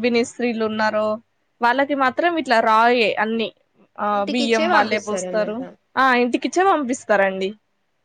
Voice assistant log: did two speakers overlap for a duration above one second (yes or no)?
yes